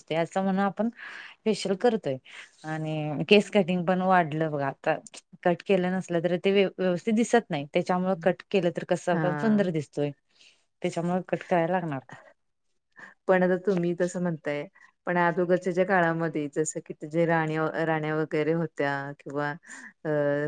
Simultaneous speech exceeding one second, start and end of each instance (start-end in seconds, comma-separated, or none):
none